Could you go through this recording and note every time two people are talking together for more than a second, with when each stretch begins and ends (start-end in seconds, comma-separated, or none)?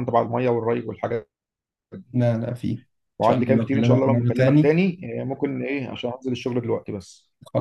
3.2-4.8